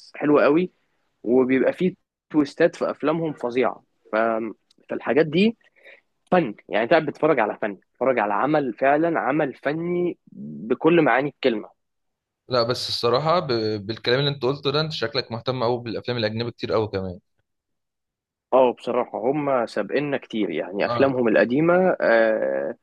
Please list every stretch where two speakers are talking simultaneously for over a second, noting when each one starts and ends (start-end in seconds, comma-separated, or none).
none